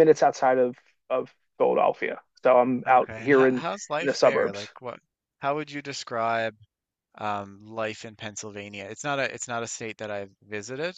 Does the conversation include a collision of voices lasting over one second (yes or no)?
yes